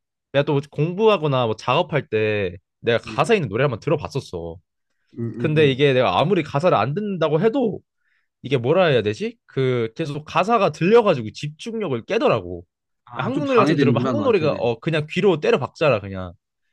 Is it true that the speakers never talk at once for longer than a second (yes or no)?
no